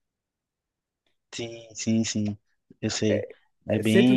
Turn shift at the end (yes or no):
yes